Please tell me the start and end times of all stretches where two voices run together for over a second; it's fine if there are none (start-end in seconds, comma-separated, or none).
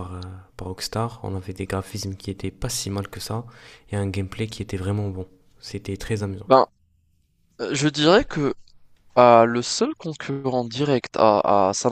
none